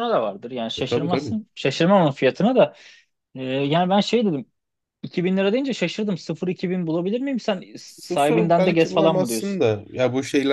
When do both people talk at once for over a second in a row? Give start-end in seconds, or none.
7.8-9.6